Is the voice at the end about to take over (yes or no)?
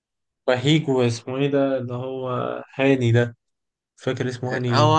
yes